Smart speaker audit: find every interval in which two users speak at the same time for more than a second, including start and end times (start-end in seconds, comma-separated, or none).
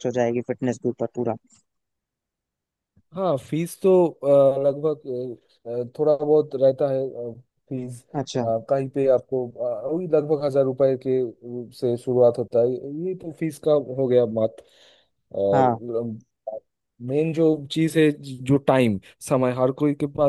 none